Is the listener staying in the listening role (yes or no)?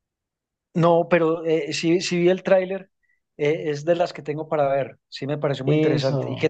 no